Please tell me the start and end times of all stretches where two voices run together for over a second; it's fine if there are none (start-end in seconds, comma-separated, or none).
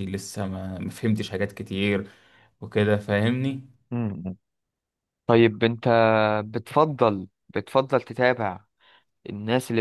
none